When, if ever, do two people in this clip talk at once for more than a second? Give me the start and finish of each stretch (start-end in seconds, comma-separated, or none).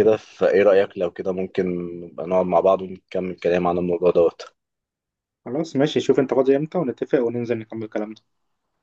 none